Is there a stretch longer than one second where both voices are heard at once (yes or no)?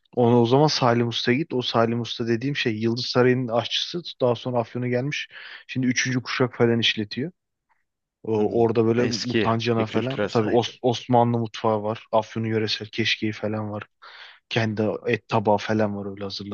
yes